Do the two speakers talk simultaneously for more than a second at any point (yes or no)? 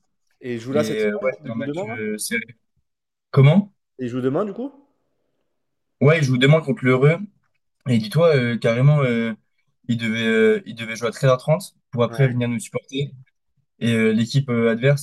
yes